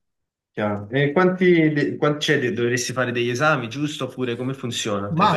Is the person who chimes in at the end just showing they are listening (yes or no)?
no